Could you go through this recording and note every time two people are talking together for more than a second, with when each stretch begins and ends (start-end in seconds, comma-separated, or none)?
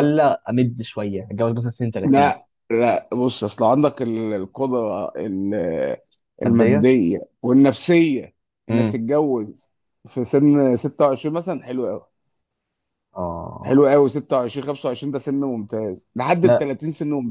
none